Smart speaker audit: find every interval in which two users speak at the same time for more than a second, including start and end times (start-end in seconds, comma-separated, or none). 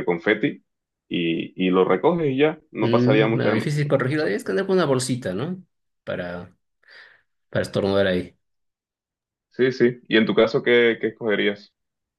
2.8-4.3